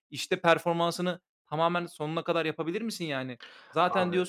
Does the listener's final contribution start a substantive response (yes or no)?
no